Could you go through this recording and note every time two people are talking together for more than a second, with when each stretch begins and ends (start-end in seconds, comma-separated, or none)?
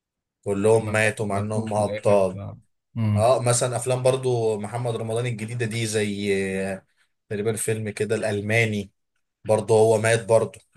0.8-2.4